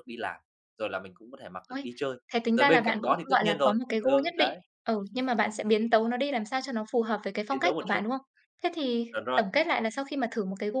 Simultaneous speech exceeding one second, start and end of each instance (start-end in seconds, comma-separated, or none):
2.5-4.6